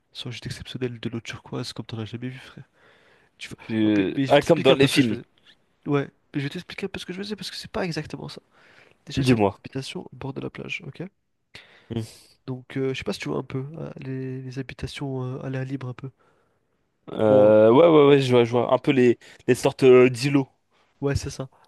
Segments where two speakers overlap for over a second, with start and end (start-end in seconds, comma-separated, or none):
3.7-5.2